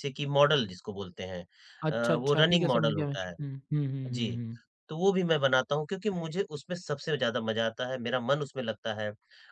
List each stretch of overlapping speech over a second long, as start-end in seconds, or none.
1.9-3.3